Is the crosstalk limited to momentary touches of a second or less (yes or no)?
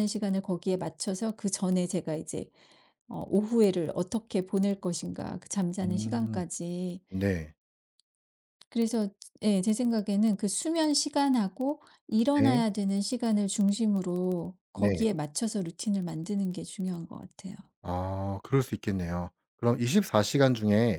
yes